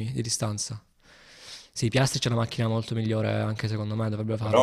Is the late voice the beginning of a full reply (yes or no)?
no